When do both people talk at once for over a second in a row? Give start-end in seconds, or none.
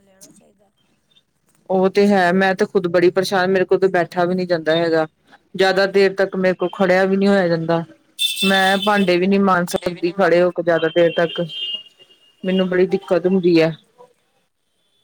none